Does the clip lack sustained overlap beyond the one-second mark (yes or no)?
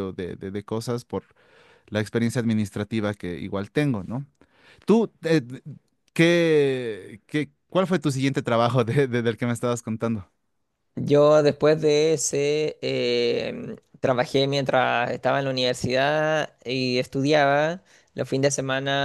yes